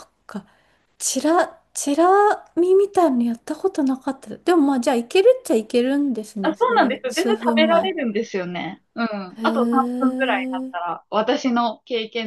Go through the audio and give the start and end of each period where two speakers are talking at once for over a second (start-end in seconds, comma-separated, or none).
6.4-7.9, 9.4-10.7